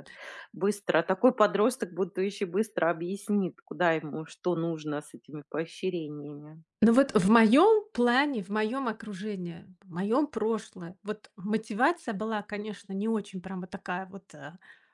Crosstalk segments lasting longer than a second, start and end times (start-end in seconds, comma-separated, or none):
none